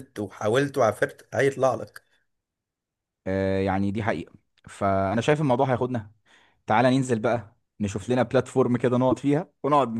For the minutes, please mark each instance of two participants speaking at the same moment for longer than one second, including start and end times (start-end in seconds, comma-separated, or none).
none